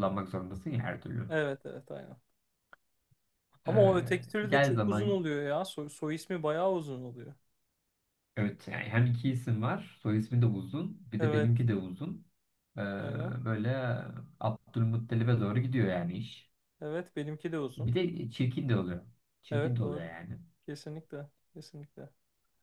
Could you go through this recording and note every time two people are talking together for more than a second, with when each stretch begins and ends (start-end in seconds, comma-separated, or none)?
3.7-5.2